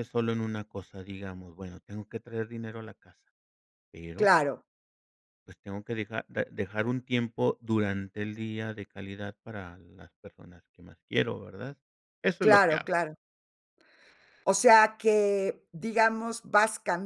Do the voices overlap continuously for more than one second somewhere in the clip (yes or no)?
no